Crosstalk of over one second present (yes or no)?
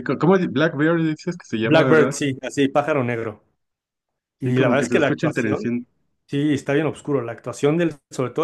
yes